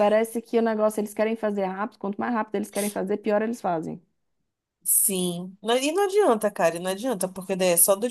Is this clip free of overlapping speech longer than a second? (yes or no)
yes